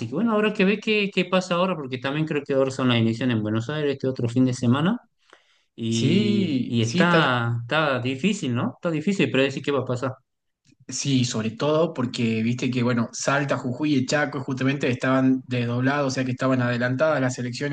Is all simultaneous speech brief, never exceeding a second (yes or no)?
no